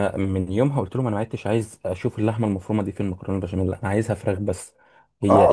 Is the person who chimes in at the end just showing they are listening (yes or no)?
no